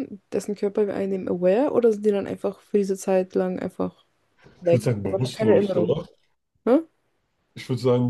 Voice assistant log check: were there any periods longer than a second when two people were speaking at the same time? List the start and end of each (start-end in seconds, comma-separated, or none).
4.6-6.0